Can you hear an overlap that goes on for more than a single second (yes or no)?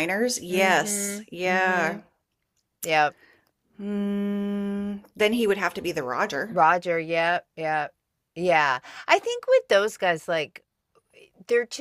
yes